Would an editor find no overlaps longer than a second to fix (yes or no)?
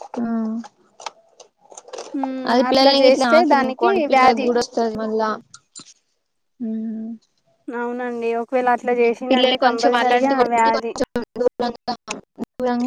no